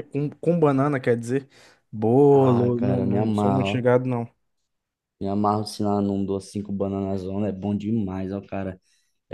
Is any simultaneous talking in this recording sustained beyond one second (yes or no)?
yes